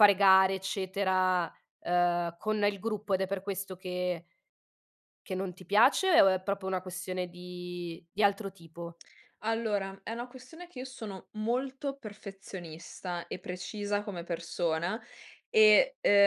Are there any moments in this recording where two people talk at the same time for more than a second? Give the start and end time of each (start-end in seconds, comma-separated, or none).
none